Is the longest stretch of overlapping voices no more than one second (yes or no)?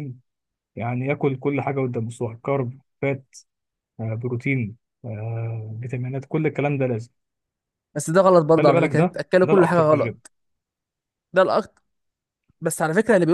no